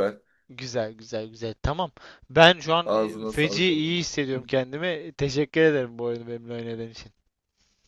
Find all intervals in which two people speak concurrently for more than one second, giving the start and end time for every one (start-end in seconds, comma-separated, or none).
2.8-4.4